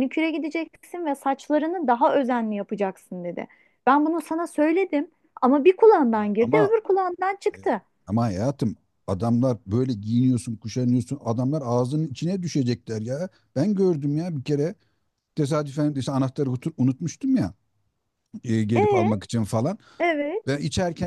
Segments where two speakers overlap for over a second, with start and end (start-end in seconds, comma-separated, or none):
none